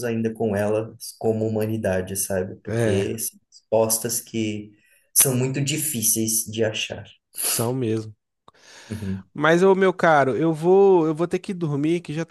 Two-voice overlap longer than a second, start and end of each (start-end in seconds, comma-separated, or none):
none